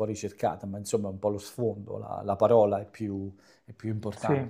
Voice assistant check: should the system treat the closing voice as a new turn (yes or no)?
no